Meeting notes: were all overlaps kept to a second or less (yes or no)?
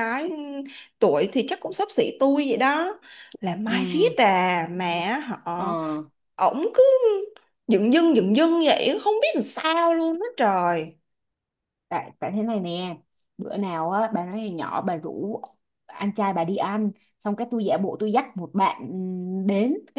yes